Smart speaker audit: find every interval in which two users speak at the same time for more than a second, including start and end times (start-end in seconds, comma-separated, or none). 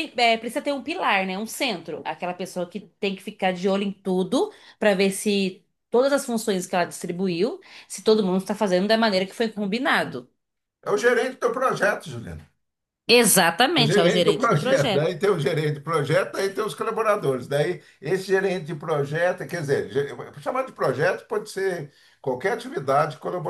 13.8-15.1